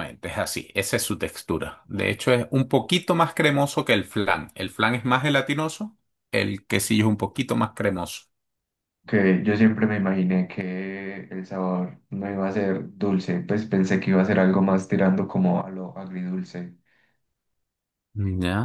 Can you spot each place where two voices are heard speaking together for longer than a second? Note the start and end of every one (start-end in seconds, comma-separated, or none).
none